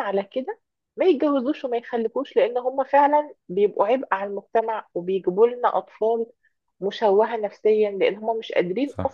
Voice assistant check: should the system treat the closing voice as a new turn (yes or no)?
no